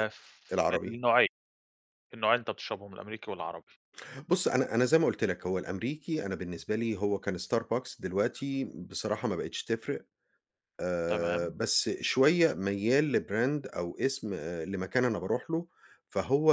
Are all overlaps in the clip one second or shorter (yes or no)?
yes